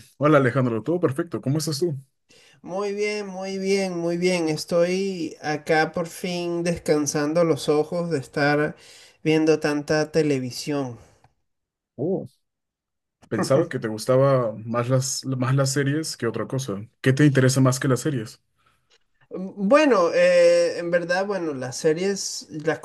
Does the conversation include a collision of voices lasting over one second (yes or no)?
no